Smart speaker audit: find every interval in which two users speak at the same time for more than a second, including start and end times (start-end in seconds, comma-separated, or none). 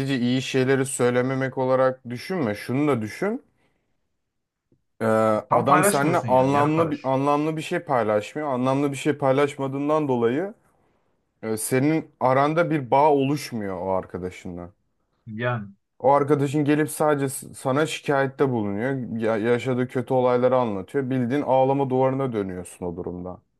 5.5-7.2